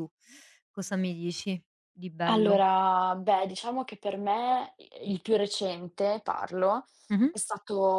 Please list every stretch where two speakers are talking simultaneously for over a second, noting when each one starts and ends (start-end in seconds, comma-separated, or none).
none